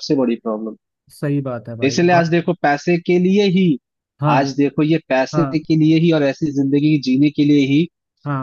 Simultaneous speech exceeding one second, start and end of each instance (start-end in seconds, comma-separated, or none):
none